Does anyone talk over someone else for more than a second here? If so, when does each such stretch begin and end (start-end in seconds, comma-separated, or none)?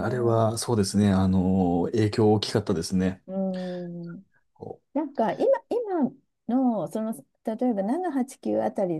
none